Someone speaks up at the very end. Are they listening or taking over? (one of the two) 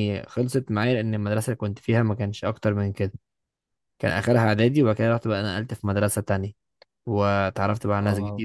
listening